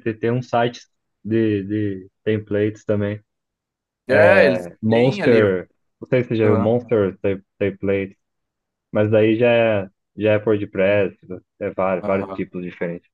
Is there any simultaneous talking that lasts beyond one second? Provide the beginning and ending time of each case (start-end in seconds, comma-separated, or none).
4.1-5.4